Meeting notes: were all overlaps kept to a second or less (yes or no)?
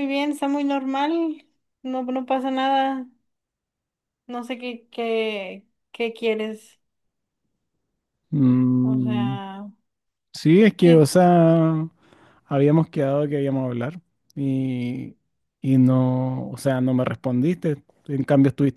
yes